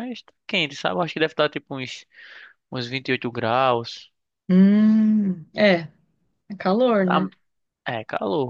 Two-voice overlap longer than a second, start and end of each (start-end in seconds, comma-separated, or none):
none